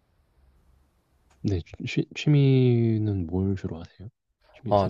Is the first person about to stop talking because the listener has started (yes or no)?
yes